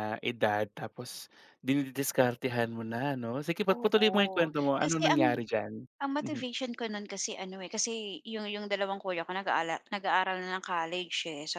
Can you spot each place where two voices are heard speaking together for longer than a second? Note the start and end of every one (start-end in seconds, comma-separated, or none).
3.7-5.5